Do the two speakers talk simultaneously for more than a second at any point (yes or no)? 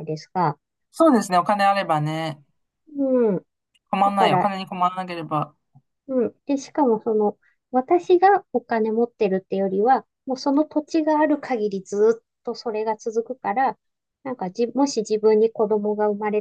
no